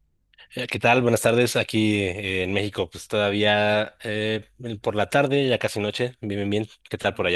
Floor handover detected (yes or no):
yes